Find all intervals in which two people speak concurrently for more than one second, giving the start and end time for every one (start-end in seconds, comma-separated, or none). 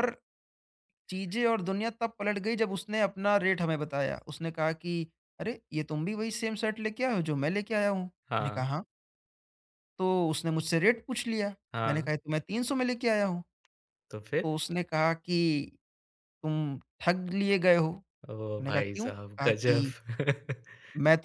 18.4-19.9